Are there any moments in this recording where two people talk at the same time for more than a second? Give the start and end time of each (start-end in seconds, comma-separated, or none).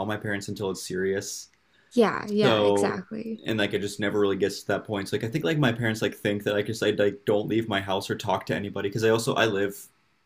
none